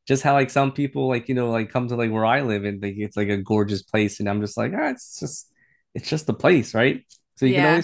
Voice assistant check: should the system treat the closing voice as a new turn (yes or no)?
no